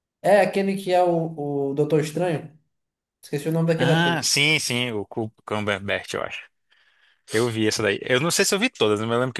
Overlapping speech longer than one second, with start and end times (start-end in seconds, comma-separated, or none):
none